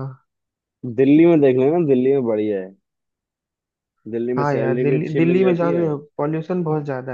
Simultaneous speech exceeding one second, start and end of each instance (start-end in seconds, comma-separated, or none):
4.4-5.9